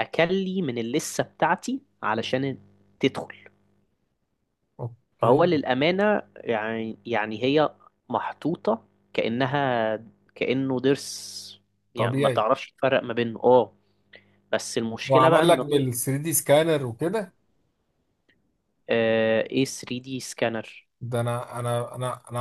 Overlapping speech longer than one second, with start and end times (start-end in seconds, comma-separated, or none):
none